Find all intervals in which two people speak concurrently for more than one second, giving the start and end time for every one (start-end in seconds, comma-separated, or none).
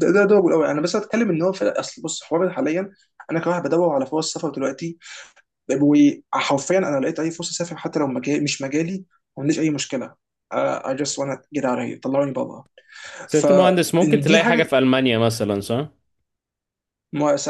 13.3-14.7